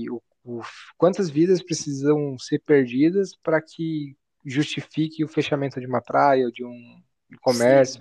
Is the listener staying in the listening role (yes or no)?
no